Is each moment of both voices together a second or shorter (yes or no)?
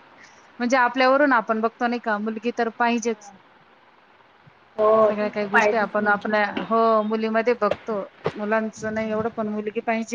no